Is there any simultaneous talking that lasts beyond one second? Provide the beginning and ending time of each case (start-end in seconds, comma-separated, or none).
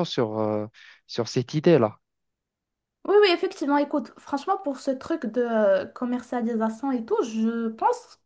none